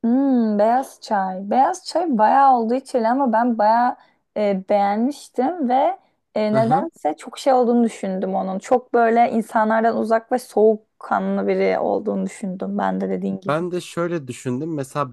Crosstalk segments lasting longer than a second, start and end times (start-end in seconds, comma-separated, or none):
none